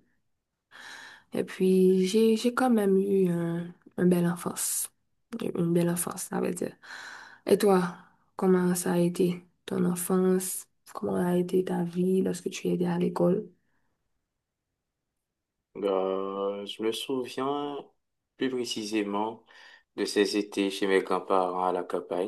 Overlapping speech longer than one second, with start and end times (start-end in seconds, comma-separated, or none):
none